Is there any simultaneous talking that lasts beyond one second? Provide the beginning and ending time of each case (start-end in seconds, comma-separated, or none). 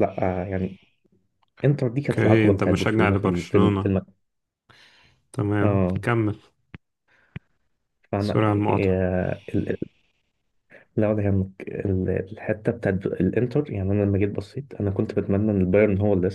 2.1-3.9